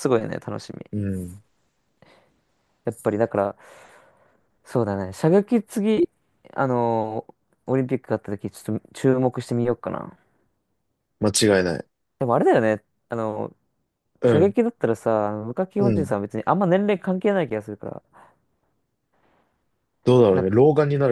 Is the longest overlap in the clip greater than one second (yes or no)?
no